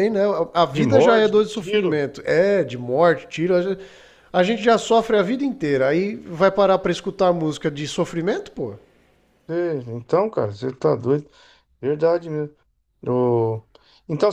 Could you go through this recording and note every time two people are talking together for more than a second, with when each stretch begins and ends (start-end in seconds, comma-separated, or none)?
0.7-2.0